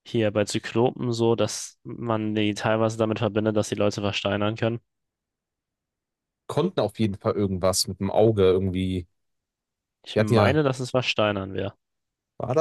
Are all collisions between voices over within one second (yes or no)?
yes